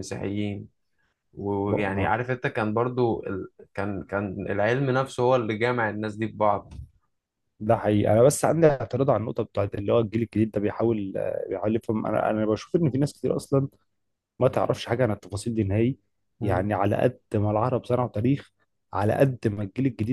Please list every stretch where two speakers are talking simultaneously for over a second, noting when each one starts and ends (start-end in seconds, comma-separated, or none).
none